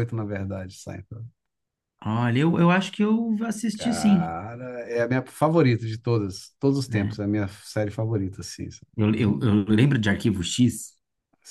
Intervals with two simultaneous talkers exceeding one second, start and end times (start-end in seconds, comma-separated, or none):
none